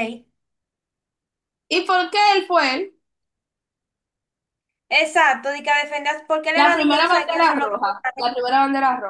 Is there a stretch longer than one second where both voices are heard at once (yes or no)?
yes